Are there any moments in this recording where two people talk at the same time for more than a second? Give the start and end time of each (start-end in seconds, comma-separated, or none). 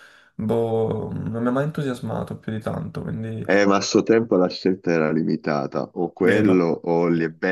none